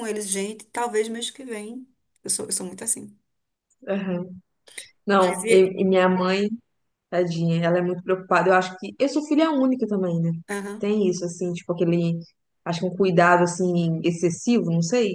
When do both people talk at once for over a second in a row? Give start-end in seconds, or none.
none